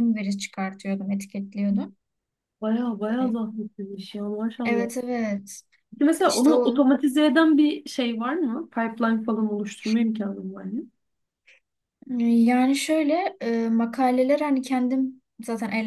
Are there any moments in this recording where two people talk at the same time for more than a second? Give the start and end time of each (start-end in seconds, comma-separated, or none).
none